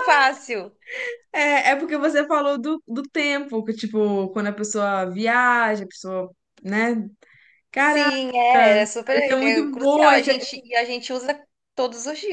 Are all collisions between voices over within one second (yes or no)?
no